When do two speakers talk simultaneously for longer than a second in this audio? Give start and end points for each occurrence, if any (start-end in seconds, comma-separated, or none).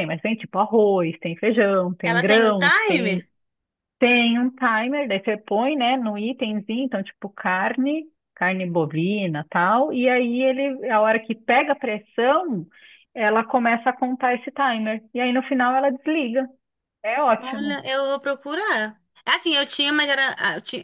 2.0-3.2